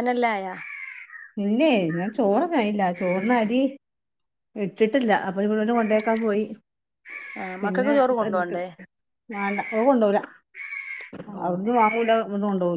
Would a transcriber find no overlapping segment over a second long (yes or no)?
yes